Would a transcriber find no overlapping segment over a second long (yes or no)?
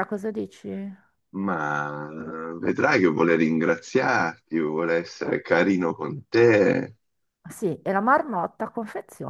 yes